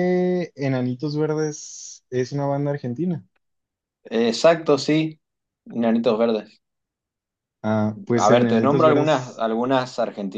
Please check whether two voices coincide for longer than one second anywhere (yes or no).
yes